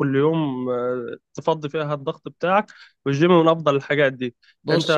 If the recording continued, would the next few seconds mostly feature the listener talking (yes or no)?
yes